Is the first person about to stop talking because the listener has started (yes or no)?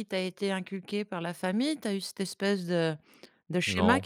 no